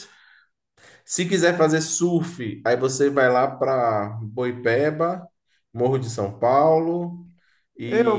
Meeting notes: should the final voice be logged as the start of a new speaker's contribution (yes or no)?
yes